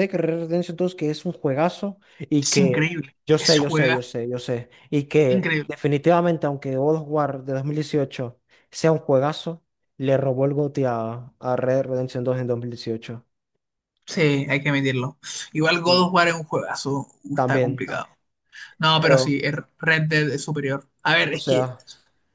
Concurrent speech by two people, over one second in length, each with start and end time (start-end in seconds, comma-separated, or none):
2.4-4.1